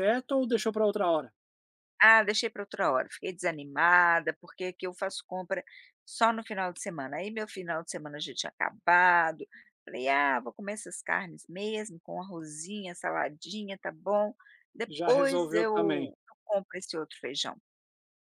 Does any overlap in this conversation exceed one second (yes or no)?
yes